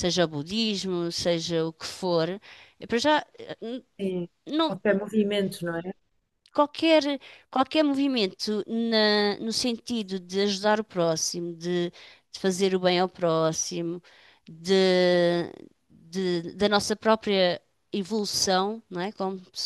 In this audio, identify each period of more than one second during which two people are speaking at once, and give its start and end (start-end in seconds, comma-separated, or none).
none